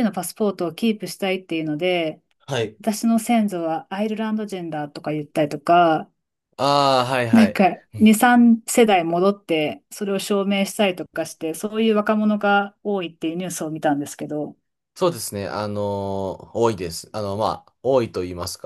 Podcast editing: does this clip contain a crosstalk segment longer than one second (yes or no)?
no